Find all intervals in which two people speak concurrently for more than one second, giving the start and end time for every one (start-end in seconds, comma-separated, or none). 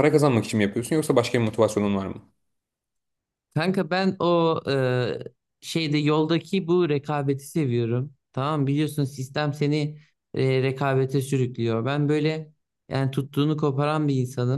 none